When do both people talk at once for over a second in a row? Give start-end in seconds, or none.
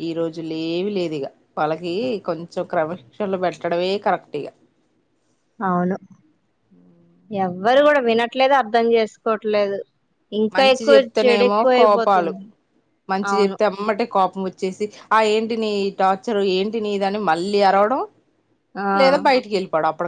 10.6-12.3